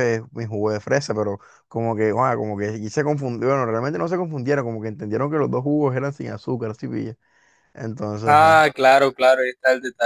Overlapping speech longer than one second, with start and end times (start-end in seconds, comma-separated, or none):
none